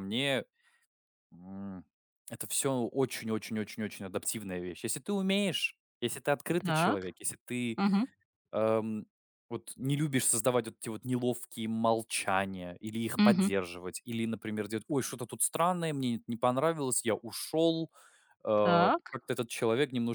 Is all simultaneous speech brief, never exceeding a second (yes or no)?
yes